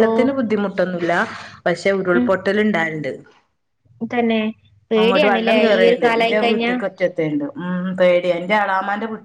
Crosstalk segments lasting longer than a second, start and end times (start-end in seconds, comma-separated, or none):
5.0-6.7